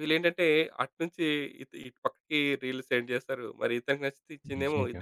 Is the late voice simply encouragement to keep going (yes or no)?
yes